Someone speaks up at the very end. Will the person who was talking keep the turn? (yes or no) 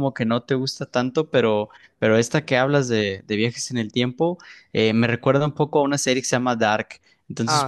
yes